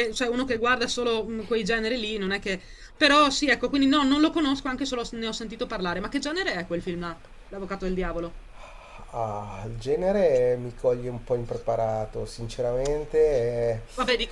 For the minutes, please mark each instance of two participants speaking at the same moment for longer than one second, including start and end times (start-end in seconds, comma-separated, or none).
none